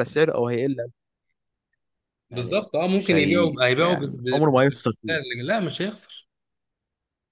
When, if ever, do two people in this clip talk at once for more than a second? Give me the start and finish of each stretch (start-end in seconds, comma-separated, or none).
2.3-4.7